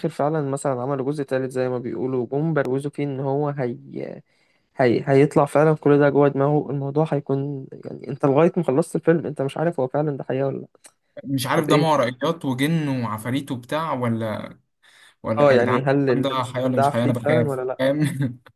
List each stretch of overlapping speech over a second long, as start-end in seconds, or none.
15.4-17.8